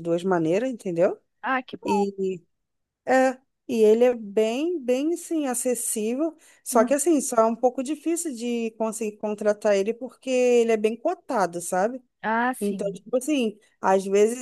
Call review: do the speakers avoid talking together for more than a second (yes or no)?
yes